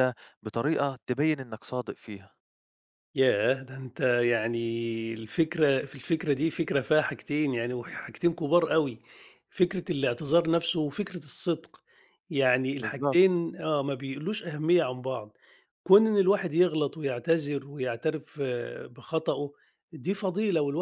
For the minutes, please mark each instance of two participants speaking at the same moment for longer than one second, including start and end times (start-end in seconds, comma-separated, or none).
none